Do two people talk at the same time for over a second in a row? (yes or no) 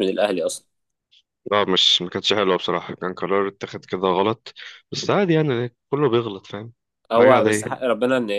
no